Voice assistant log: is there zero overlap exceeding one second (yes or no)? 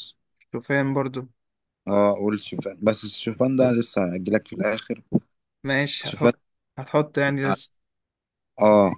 yes